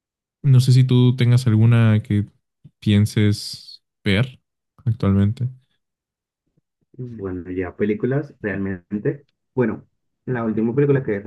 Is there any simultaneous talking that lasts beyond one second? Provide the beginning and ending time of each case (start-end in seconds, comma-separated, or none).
none